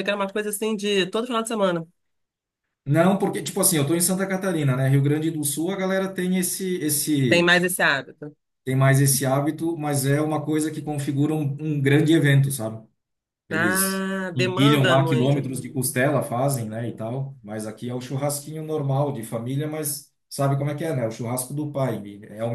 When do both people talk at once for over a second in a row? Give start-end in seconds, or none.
13.5-15.5